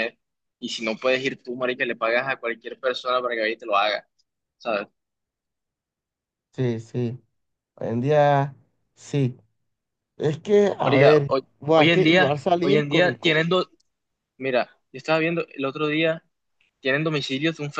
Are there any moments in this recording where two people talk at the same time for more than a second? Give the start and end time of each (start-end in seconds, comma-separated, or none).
10.8-13.3